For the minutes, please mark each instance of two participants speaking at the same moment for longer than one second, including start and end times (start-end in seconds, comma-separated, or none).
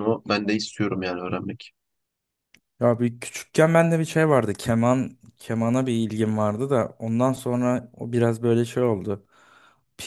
none